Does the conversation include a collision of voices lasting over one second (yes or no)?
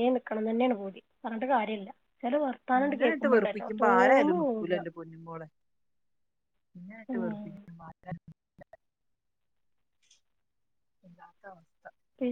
yes